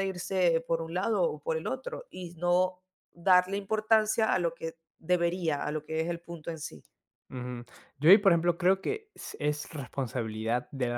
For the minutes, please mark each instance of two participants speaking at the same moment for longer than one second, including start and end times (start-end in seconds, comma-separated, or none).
none